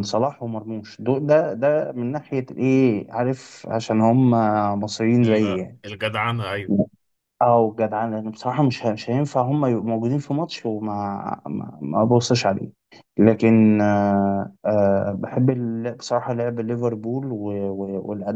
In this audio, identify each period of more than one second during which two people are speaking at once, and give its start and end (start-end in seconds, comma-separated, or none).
none